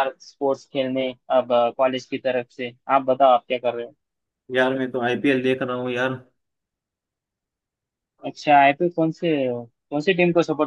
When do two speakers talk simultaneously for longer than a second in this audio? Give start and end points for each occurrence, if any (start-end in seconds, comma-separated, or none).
none